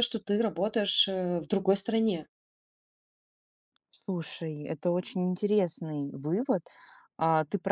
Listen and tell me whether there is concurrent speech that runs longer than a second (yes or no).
no